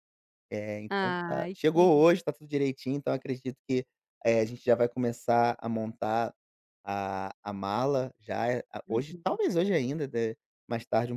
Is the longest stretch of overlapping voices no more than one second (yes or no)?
no